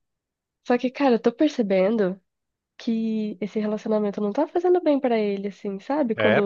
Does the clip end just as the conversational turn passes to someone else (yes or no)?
no